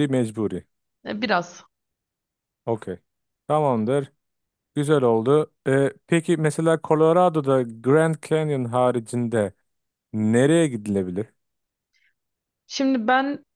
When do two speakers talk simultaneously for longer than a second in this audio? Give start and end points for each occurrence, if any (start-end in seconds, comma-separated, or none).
none